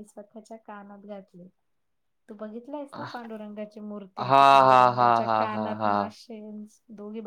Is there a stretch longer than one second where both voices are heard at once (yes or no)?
yes